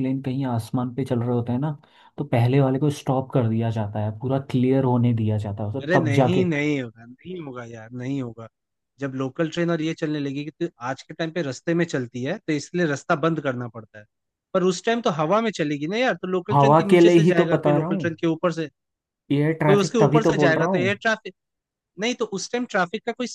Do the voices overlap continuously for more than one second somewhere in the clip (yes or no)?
yes